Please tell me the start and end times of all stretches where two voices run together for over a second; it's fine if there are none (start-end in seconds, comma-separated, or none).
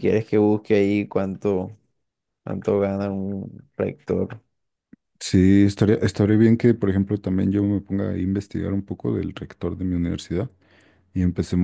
none